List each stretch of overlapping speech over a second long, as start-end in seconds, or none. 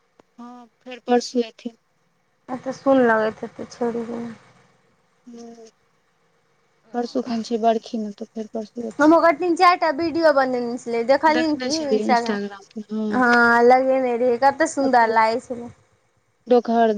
11.3-12.9